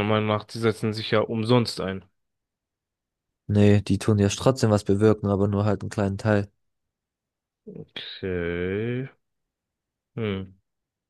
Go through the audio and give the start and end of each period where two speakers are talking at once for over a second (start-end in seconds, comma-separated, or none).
none